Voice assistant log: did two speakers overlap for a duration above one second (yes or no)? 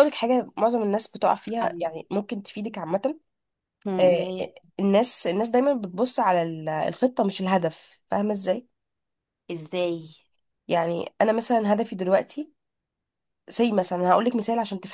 no